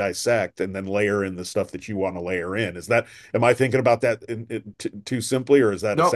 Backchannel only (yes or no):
no